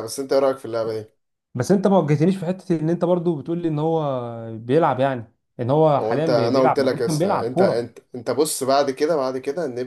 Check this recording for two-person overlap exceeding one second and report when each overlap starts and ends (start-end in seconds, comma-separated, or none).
6.0-7.9